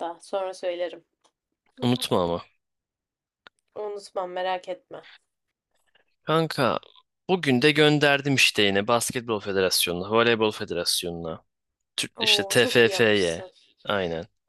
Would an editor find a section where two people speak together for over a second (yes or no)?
yes